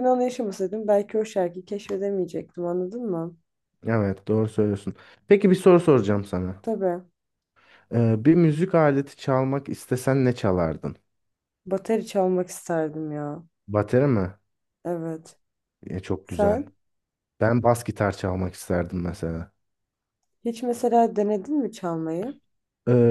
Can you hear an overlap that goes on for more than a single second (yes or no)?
no